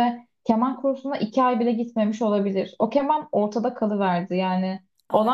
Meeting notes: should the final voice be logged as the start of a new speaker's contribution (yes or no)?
no